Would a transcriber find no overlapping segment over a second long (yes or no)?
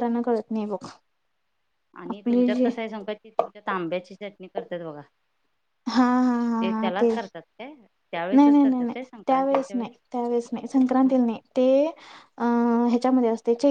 no